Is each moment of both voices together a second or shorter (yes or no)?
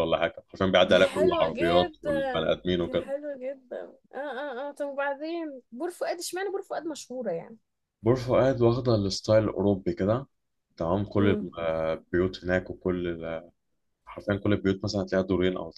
no